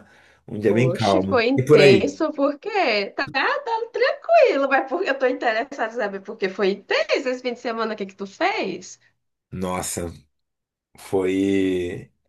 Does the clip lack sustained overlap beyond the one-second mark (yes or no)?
no